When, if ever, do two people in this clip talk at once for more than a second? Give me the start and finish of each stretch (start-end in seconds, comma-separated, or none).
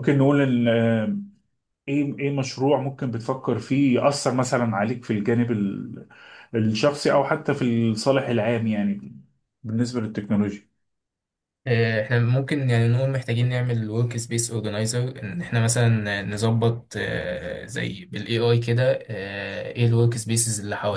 none